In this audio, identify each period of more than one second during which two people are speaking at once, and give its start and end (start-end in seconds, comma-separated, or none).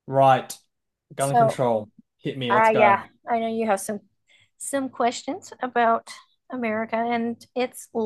none